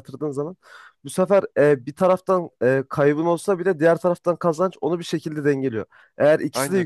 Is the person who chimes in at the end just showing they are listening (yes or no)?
yes